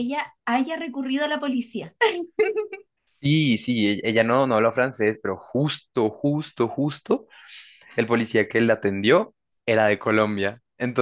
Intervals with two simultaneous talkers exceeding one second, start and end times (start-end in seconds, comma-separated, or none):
none